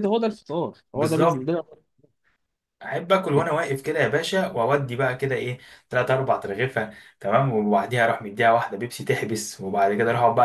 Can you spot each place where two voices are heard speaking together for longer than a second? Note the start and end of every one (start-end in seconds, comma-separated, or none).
none